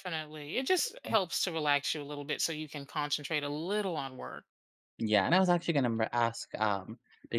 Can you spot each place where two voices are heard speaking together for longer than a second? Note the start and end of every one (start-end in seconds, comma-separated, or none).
none